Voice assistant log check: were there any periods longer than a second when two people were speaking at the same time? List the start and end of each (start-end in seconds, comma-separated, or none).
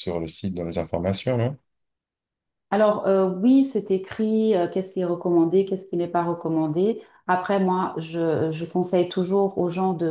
none